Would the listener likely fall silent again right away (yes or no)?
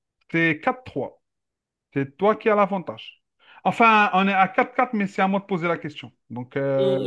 no